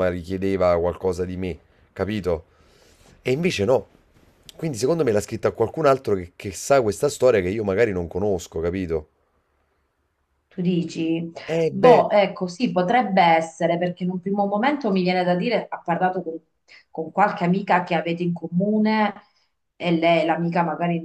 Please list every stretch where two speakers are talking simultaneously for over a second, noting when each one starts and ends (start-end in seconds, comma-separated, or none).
none